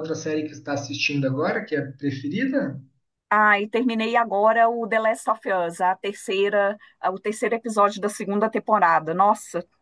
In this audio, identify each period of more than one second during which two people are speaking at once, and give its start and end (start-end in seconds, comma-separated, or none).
none